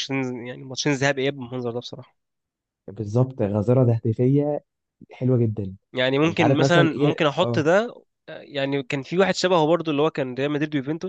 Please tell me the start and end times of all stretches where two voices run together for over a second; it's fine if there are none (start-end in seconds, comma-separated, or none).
6.2-7.6